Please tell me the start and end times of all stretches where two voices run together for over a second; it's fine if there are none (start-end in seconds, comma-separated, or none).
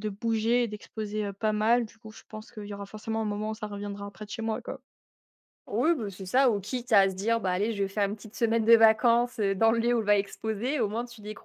none